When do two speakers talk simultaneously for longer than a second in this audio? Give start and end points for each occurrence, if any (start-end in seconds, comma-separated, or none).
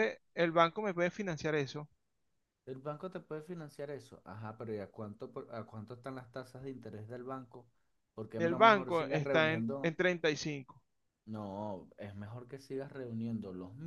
8.4-9.9